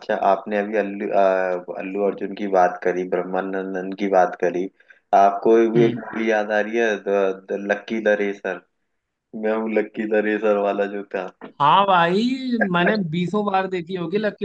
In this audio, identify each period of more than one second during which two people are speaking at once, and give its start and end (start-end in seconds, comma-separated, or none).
none